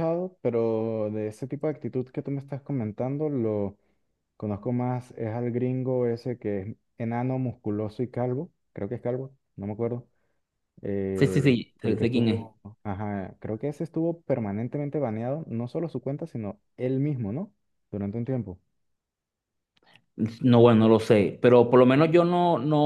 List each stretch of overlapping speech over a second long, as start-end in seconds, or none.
11.2-12.5